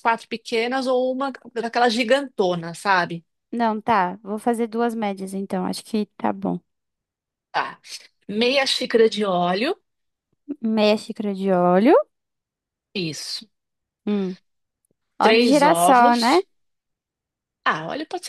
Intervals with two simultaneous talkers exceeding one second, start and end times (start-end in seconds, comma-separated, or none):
15.2-16.4